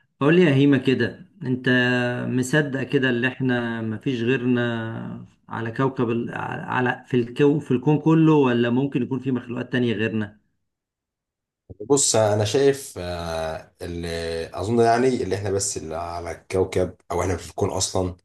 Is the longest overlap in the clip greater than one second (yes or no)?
no